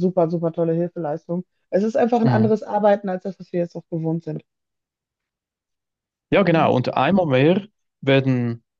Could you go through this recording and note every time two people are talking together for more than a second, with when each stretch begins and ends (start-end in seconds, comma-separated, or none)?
none